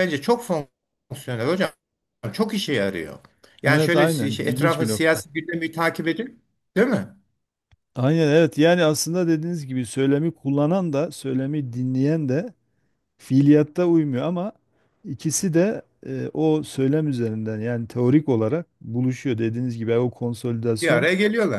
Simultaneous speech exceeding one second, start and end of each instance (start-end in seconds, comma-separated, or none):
3.7-5.2